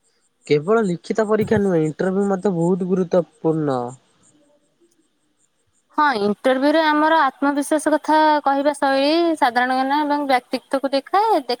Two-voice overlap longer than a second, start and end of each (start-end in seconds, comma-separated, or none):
none